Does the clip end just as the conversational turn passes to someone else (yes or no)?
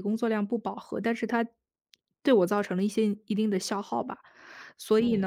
no